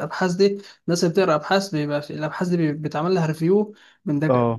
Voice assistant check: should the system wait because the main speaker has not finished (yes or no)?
yes